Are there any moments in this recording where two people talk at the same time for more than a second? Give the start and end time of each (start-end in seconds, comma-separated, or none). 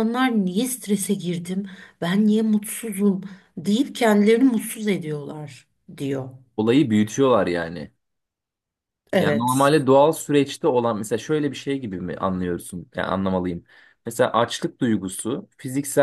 none